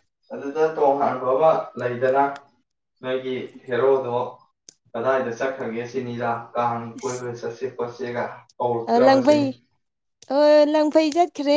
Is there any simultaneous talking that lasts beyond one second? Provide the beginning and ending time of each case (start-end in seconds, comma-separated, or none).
none